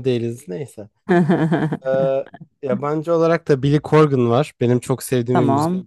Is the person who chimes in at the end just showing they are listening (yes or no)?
yes